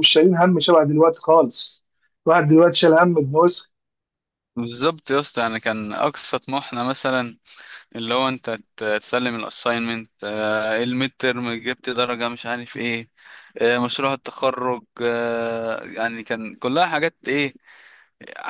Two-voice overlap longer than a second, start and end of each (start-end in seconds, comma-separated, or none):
none